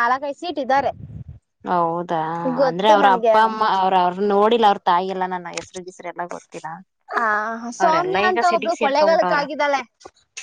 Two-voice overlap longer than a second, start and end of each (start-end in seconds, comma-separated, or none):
7.8-9.4